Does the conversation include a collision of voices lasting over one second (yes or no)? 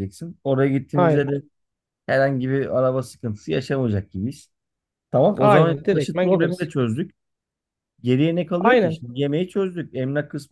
yes